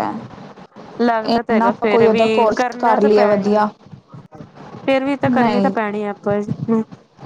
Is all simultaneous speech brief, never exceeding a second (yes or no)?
no